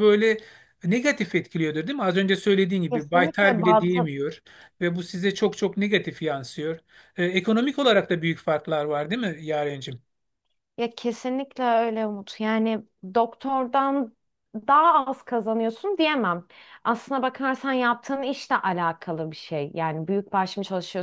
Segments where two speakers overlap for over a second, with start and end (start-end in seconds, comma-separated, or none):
2.9-4.1